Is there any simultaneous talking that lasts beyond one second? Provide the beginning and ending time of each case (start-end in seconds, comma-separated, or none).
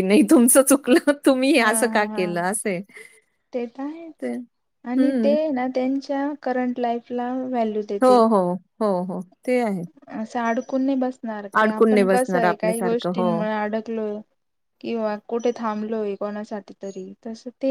11.9-13.3